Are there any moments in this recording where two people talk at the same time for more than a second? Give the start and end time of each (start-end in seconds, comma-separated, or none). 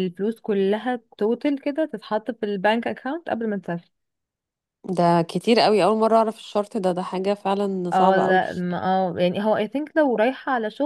none